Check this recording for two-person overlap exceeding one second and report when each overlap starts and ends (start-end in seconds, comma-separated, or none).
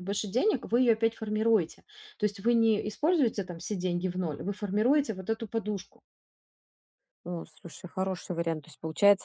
none